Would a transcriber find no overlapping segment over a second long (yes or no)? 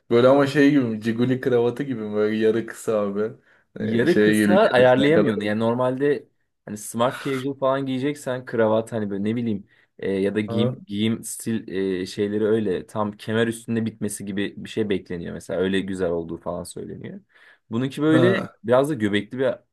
no